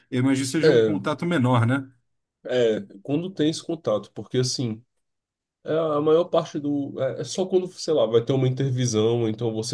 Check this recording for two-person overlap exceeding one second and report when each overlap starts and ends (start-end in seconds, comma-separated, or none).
none